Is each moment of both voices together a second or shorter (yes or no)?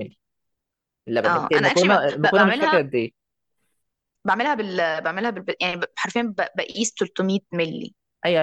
no